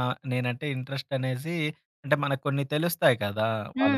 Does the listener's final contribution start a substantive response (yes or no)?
yes